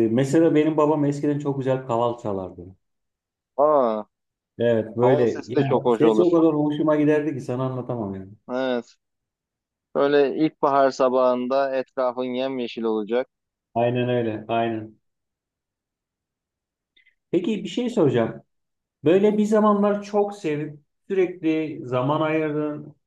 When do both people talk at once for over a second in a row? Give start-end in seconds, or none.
5.0-6.4